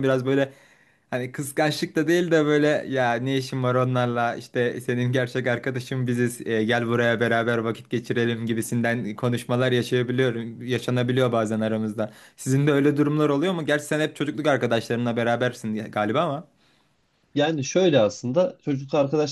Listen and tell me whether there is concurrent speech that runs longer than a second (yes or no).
no